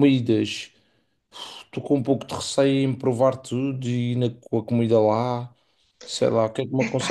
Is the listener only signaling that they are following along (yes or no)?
yes